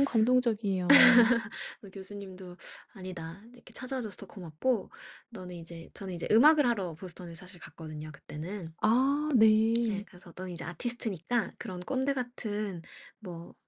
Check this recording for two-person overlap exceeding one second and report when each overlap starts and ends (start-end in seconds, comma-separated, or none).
none